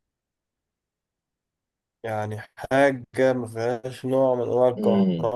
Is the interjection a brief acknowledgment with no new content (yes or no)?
yes